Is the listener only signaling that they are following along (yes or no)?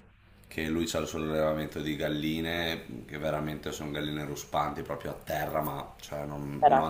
yes